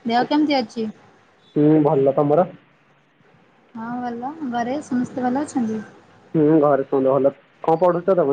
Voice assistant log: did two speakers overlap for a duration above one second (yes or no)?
no